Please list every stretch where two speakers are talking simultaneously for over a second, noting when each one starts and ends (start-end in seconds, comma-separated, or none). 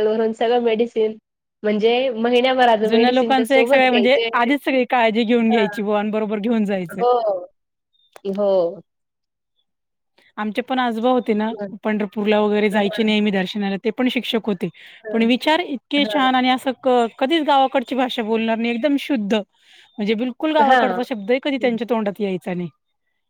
2.9-4.3